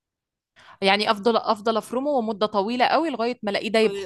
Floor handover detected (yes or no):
yes